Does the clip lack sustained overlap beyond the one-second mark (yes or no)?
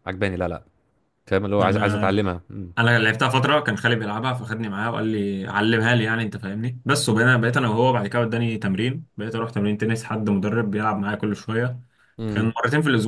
yes